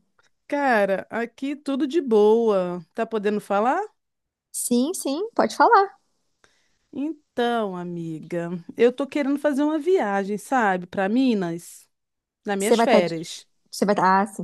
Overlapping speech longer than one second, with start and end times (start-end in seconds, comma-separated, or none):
none